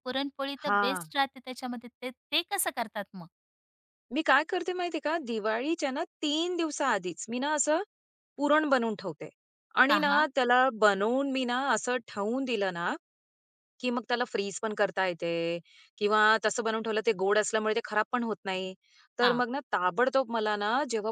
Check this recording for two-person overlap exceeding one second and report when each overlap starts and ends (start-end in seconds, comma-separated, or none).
none